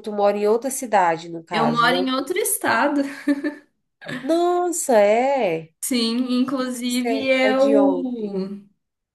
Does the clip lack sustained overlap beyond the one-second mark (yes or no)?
no